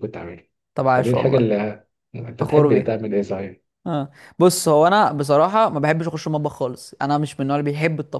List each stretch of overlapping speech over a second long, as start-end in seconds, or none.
none